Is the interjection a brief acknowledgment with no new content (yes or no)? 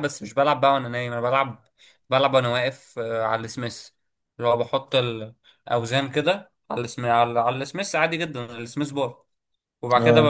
yes